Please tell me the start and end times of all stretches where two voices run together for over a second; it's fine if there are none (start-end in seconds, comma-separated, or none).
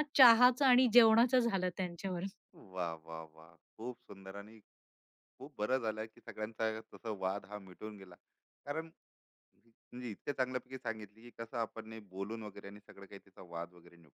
none